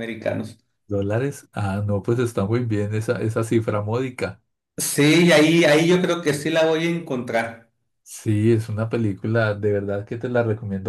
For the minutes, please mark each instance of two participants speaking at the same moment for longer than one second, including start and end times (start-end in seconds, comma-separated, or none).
none